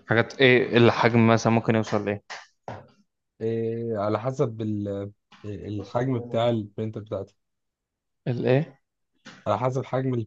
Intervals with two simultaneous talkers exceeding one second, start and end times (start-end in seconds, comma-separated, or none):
none